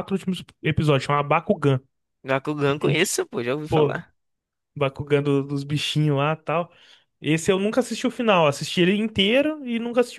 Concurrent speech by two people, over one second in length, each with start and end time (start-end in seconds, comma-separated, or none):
2.6-4.0